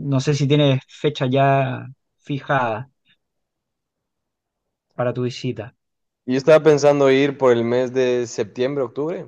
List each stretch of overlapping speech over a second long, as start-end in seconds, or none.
none